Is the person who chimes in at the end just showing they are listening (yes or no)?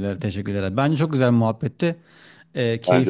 yes